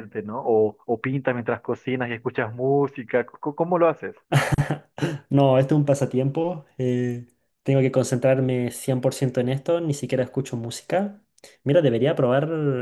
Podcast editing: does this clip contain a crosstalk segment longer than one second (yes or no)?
no